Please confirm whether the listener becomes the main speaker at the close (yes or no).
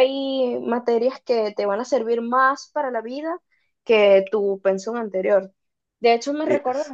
no